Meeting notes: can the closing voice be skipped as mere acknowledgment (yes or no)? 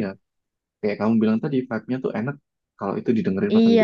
no